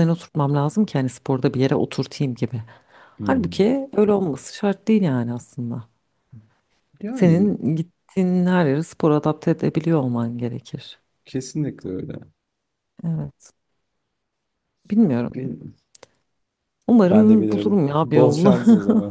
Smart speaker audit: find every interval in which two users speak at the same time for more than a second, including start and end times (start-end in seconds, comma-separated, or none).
17.1-18.6